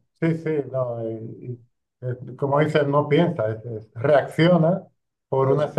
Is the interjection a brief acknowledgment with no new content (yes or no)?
yes